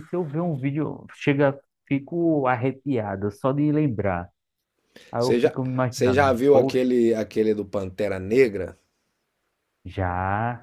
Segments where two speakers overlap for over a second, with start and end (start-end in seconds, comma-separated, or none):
5.2-6.8